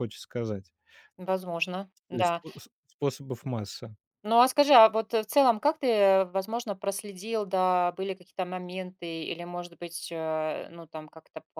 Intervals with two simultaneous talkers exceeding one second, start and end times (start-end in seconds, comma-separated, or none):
none